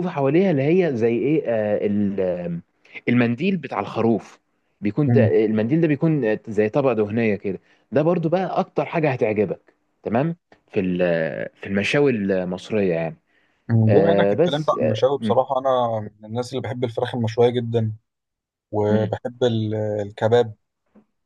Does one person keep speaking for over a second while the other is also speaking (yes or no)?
yes